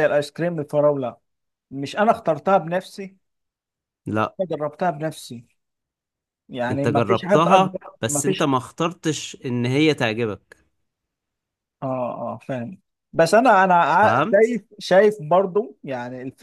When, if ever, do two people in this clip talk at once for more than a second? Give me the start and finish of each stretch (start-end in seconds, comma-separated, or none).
6.7-8.5